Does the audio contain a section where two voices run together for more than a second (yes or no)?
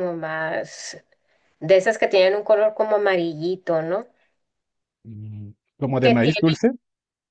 no